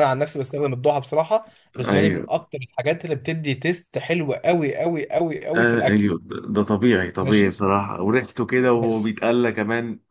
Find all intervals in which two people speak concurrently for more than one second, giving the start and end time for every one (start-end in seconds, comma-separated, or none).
none